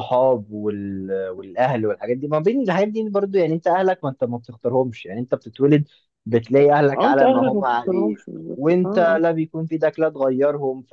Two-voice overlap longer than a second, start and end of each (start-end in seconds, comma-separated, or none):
7.0-9.2